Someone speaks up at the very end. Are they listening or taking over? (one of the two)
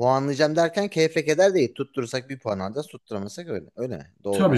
taking over